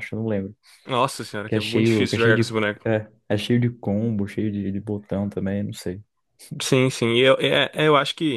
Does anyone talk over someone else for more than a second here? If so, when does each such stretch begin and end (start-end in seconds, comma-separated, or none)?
1.5-2.9